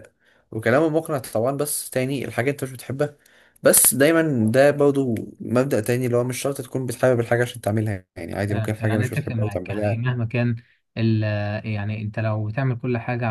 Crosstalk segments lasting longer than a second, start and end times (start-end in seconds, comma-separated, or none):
8.5-10.0